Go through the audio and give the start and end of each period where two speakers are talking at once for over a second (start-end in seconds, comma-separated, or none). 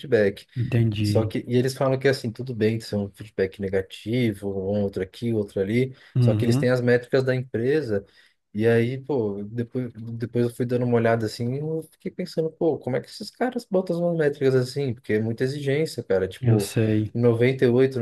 none